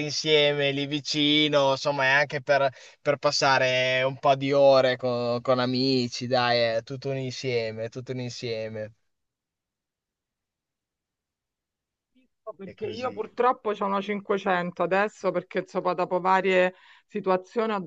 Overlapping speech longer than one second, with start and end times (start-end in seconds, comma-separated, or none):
none